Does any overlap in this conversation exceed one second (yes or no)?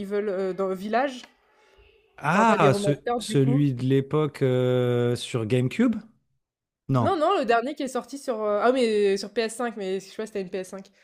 yes